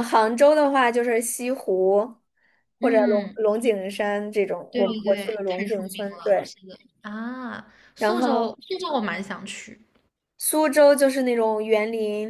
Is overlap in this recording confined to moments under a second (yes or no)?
no